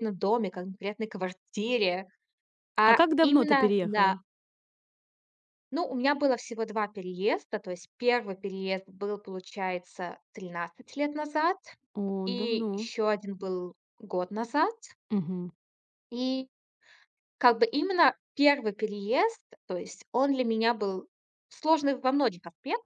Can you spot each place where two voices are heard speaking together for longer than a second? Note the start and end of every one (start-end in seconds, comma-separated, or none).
2.8-4.2